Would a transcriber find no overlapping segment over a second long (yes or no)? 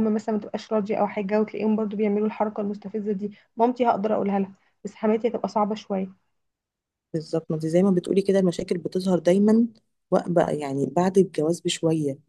yes